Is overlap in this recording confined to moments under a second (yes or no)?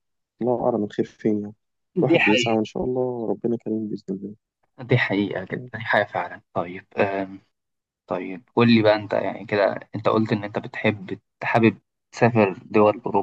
yes